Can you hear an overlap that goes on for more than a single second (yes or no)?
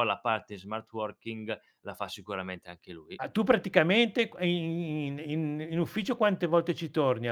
no